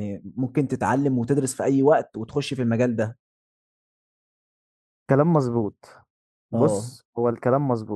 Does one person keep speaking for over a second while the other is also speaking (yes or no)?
no